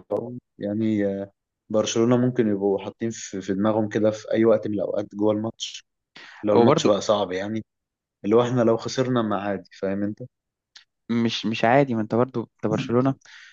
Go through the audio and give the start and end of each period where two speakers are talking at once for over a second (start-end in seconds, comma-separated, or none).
none